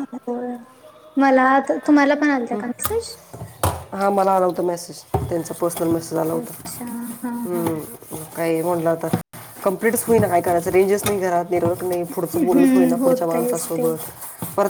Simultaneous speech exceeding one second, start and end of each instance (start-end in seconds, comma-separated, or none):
12.4-13.9